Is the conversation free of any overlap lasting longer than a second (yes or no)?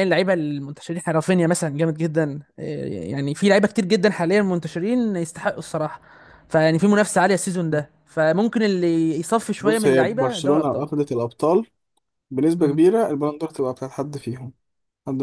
no